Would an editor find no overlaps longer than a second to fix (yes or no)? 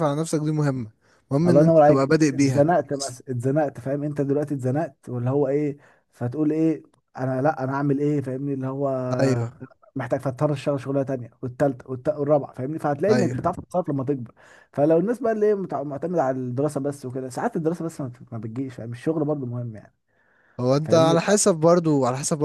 no